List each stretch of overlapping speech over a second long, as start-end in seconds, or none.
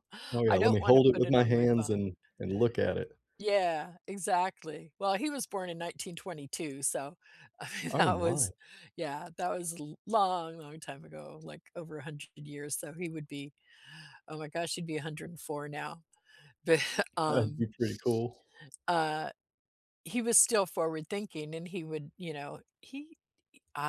0.5-2.1